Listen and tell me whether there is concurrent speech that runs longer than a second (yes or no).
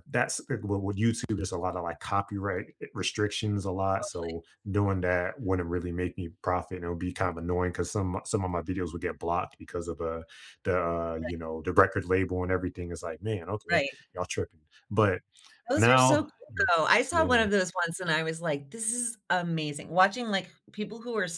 no